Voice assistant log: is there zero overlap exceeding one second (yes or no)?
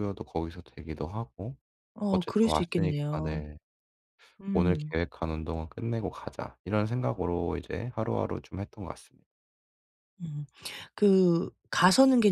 no